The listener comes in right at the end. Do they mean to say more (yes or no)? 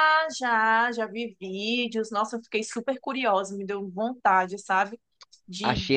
yes